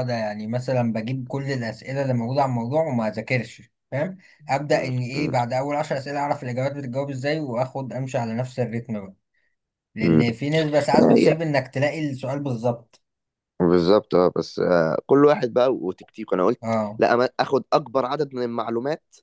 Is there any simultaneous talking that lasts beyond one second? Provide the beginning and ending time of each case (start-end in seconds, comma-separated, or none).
none